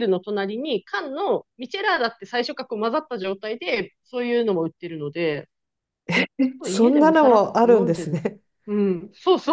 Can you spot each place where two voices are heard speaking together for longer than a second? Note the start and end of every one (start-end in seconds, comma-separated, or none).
6.7-8.2